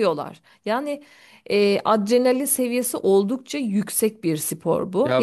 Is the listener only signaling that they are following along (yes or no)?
yes